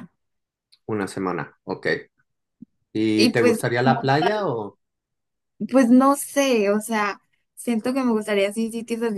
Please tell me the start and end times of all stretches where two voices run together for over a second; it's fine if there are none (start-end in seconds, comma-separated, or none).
3.1-4.5